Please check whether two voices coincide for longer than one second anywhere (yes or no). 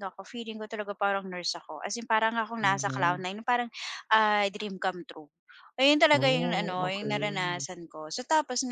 yes